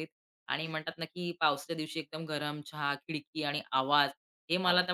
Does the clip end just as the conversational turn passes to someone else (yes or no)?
no